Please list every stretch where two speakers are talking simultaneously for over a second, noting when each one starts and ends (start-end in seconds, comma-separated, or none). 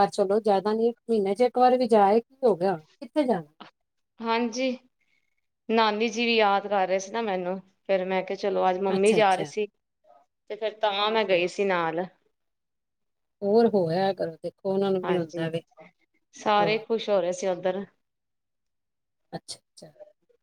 none